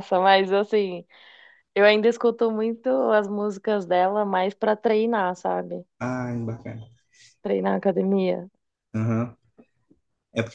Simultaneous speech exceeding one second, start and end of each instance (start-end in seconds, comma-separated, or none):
none